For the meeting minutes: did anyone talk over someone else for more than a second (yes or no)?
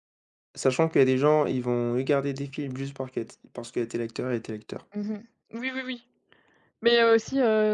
no